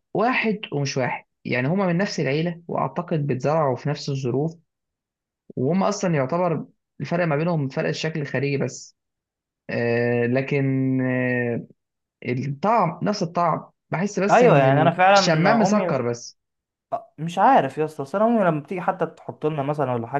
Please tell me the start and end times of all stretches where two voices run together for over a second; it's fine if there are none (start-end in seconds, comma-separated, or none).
14.3-16.1